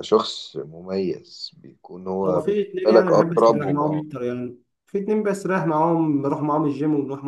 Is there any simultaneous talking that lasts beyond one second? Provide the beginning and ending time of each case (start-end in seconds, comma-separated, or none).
2.3-4.0